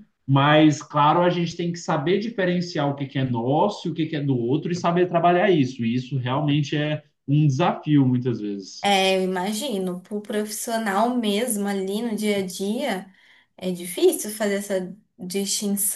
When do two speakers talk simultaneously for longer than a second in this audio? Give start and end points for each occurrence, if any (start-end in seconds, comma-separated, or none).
none